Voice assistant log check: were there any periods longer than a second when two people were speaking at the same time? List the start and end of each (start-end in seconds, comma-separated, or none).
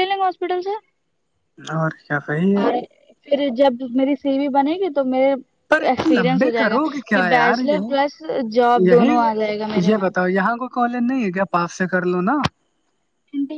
5.9-7.9